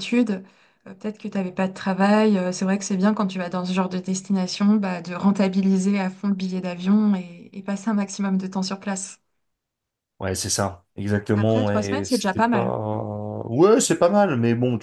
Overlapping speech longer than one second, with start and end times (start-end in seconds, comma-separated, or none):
11.3-12.8